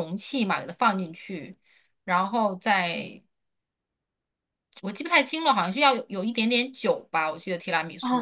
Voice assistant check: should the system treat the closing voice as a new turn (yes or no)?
yes